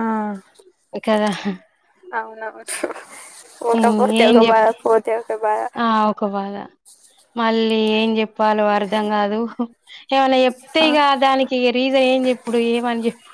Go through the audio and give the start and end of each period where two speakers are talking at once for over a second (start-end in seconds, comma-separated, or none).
none